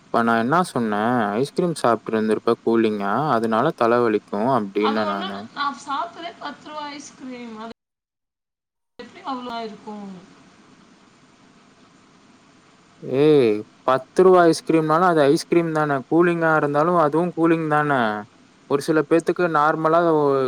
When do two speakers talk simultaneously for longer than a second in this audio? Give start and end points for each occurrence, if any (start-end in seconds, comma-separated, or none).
none